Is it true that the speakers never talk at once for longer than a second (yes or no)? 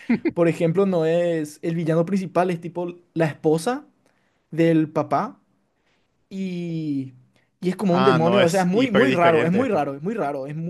no